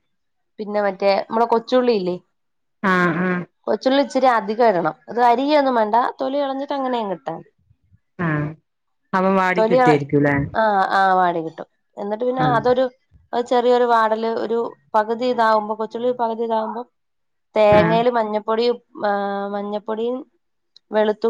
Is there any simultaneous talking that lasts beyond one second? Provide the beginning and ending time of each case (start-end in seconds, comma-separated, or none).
none